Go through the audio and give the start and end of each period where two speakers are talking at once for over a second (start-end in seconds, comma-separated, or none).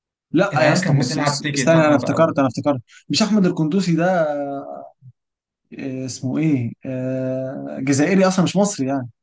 0.5-2.4